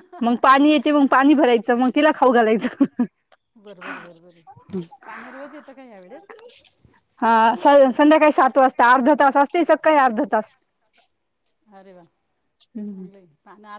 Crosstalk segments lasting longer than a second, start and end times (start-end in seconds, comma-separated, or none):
none